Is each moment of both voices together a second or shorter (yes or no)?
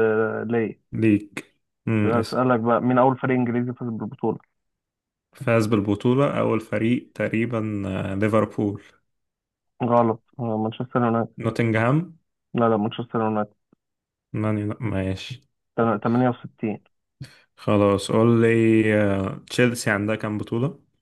yes